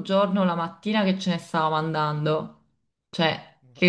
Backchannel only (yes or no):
yes